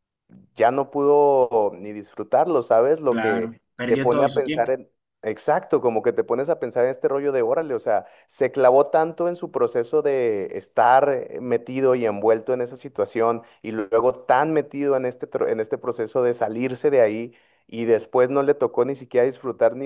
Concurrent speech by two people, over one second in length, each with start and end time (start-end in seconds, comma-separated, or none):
3.1-4.7